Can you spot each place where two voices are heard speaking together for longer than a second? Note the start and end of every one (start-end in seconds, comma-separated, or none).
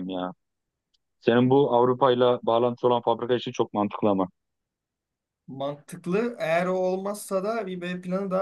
none